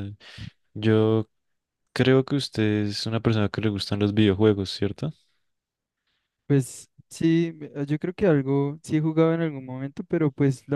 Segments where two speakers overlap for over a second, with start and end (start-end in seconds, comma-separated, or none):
none